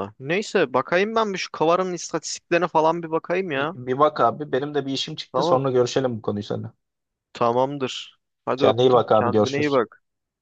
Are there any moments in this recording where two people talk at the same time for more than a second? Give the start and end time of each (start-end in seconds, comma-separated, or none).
8.6-9.8